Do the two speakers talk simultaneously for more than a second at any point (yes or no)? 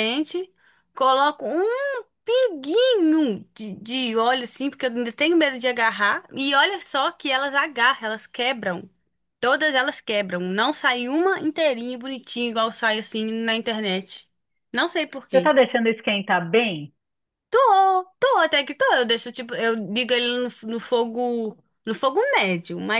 no